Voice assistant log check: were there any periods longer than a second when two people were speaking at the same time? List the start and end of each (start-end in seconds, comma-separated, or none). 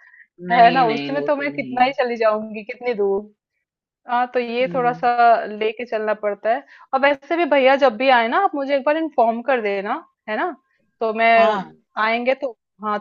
0.5-1.9